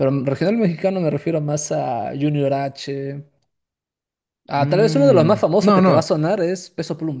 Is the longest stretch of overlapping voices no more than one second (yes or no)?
no